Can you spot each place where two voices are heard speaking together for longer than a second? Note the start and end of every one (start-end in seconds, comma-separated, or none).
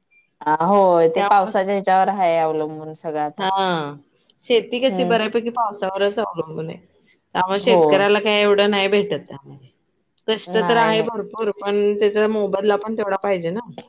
none